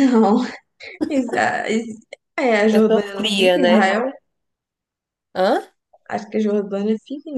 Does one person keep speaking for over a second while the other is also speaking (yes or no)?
yes